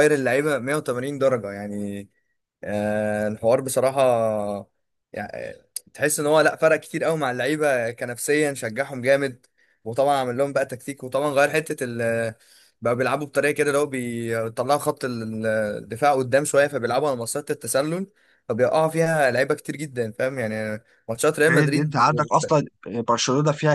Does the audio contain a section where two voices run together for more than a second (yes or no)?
no